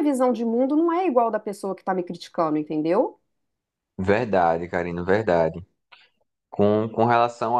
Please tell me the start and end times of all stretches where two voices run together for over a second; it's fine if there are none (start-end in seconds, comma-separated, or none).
none